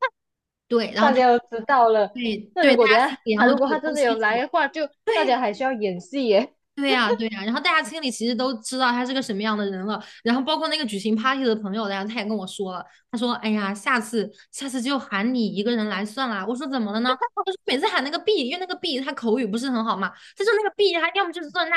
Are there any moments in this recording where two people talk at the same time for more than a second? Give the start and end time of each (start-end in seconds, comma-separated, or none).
2.5-4.4